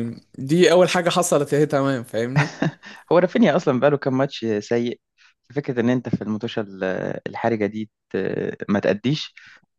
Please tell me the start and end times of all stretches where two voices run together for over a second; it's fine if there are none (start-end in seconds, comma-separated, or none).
none